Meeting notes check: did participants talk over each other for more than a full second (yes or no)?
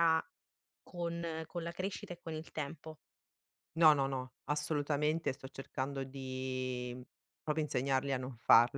no